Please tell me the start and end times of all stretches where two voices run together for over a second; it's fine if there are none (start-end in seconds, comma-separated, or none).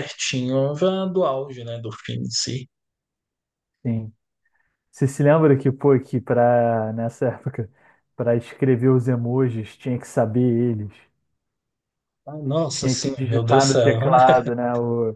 12.7-14.2